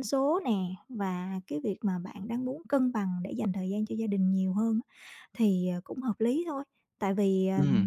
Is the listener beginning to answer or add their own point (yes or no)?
no